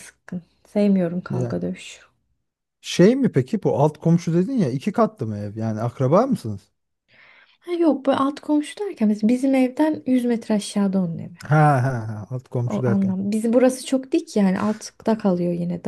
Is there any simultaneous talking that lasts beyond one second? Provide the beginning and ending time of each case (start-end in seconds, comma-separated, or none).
none